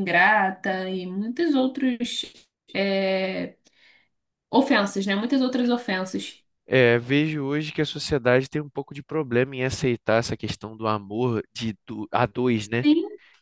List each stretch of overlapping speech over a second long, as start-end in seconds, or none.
none